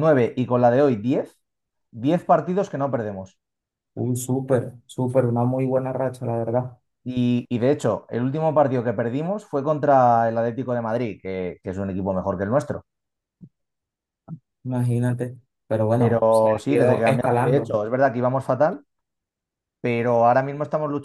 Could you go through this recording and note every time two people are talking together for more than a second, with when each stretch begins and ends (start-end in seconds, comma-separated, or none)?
15.9-17.8